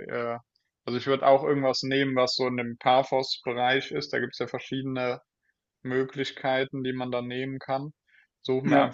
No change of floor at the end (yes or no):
yes